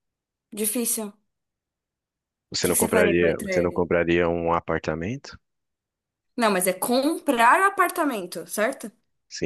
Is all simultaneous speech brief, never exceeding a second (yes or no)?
no